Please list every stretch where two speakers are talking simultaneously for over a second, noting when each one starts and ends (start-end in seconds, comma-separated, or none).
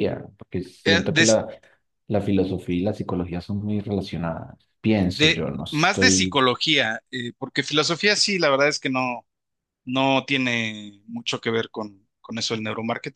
5.1-6.4